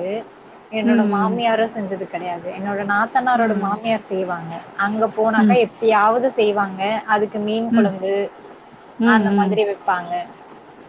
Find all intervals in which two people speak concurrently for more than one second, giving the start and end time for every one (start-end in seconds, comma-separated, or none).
none